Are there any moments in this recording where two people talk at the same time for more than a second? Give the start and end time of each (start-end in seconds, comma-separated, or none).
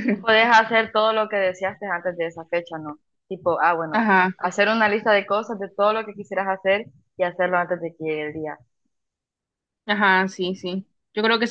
none